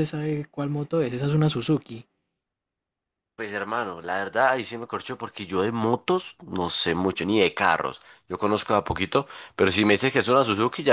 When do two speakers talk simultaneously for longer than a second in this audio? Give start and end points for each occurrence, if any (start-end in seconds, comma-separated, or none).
none